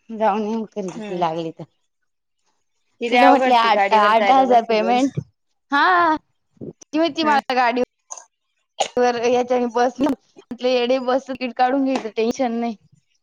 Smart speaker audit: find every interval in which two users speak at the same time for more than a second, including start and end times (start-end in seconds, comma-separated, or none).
3.1-5.0